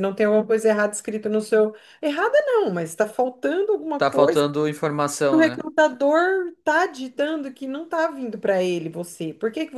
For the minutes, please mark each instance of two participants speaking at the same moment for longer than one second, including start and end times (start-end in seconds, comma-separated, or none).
none